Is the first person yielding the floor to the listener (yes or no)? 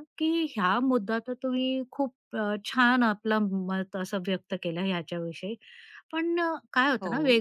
no